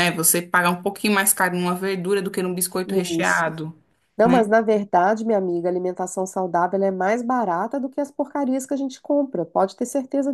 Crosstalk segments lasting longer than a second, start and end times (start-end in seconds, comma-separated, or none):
none